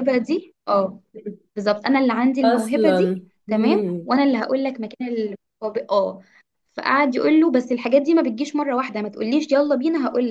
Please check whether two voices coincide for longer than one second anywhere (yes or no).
yes